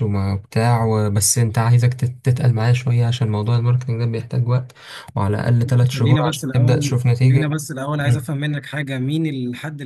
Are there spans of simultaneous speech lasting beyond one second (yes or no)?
yes